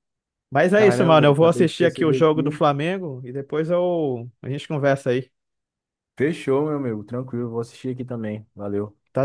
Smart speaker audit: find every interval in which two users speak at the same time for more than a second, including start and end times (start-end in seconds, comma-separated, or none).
0.7-2.6